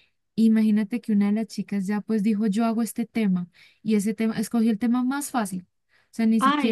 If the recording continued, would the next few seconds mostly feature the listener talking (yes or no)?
yes